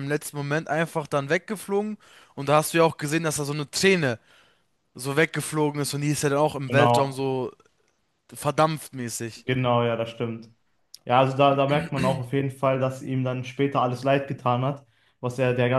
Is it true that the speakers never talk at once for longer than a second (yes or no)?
yes